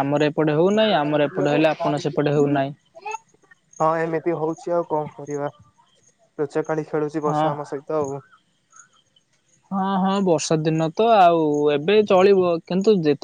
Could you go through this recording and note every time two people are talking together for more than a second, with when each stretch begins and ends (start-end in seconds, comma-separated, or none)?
0.7-2.5